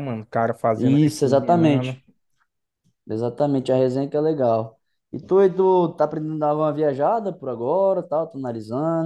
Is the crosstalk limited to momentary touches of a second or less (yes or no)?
no